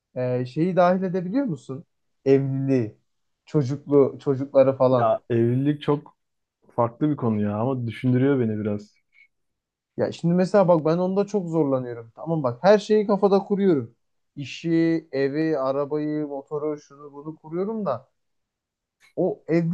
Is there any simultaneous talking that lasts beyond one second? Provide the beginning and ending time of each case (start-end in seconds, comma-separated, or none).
none